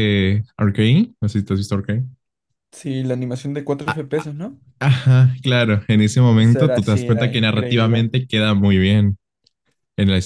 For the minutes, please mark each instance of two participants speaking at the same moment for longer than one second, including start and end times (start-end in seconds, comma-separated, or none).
6.4-8.1